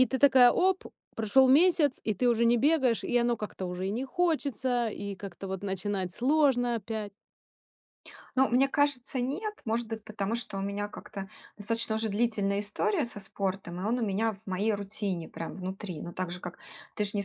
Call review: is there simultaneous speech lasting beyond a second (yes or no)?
no